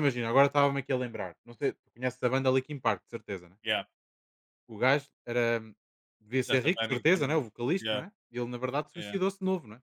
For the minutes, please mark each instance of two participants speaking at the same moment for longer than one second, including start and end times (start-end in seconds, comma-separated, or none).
6.3-8.0